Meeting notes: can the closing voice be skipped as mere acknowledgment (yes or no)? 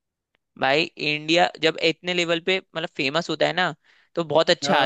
yes